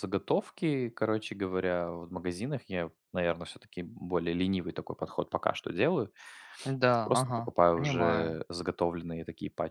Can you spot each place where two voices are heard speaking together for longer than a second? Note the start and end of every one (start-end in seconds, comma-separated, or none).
6.9-8.4